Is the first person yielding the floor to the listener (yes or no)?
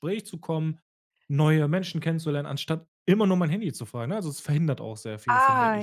yes